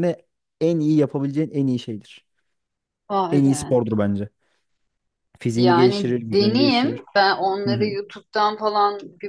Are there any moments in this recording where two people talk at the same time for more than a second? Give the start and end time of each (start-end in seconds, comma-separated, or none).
5.6-7.0